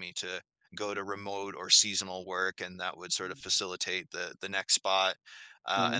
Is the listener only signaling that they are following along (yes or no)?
yes